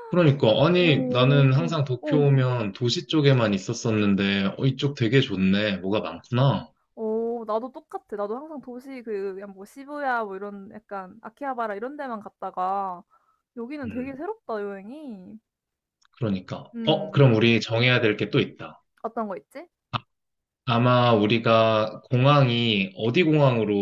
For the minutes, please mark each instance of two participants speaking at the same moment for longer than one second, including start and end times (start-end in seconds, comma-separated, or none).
0.8-2.2